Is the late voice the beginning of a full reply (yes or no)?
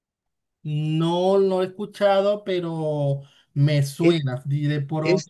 yes